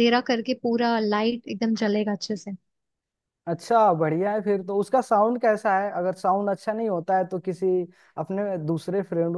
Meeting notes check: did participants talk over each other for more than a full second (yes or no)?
no